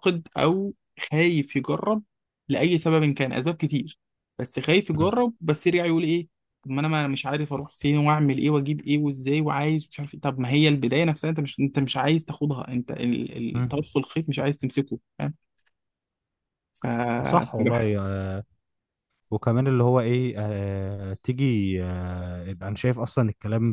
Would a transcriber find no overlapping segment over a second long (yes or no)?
yes